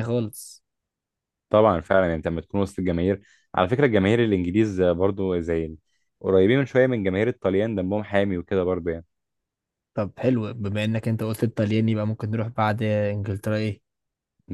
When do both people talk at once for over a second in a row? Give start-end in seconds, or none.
none